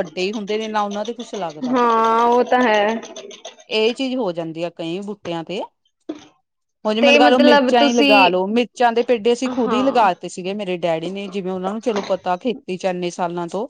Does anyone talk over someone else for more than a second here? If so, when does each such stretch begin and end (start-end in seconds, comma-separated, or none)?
7.0-8.3